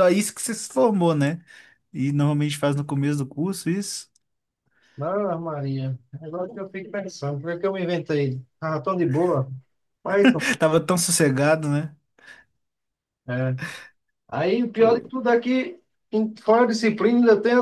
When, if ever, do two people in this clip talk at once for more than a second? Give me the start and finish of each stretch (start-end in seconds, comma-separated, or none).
none